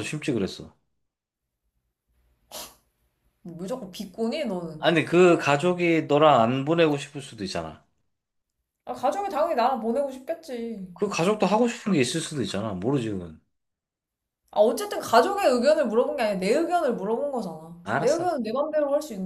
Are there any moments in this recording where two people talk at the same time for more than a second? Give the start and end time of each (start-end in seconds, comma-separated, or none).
none